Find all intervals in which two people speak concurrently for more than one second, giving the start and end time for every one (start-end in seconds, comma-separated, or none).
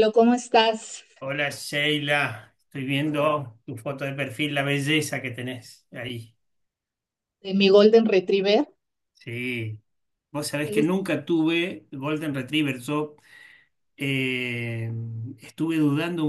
none